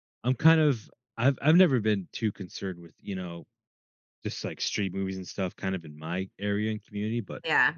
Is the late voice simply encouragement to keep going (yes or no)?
yes